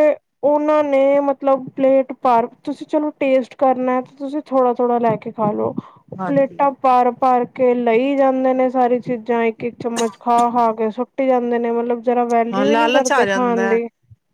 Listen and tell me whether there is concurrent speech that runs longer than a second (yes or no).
yes